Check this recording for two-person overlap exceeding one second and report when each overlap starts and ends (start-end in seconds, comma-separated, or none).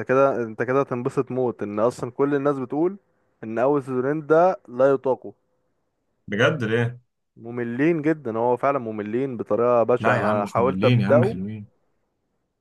10.0-11.4